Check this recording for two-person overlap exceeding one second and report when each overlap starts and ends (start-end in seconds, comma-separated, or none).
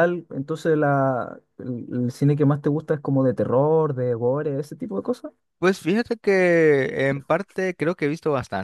none